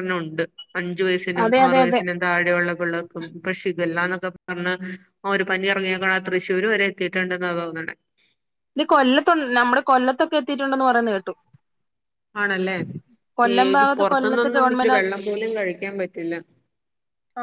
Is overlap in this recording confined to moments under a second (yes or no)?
no